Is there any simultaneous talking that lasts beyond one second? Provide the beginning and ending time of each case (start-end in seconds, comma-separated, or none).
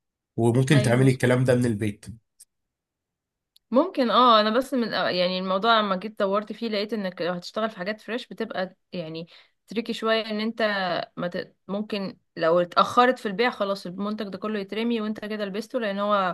none